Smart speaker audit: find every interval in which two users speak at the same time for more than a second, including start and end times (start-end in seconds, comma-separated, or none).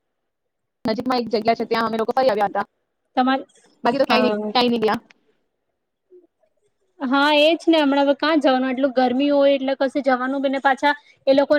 none